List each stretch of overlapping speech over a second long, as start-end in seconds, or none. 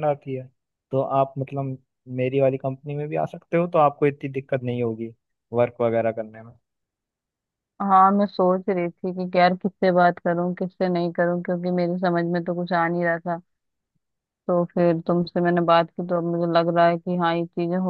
none